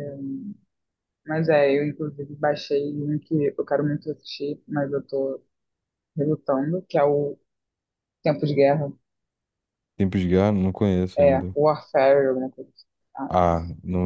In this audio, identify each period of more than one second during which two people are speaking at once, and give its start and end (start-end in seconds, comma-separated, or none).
none